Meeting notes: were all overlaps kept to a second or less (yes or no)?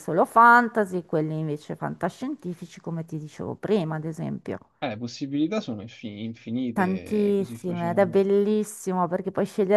no